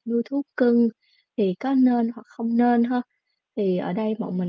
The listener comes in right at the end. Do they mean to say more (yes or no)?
no